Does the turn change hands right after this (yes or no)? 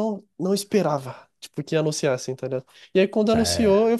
no